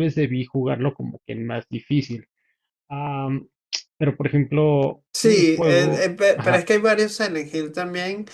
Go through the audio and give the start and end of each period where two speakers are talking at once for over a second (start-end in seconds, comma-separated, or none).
5.1-6.7